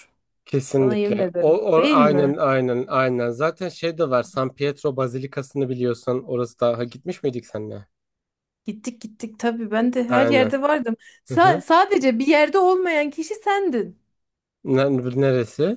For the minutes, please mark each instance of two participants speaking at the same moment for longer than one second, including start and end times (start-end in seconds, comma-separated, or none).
0.8-2.4